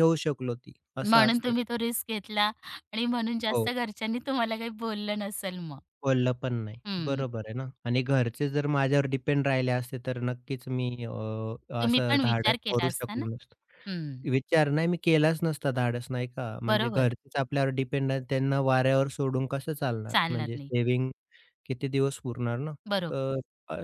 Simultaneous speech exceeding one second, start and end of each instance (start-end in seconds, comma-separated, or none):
11.8-13.2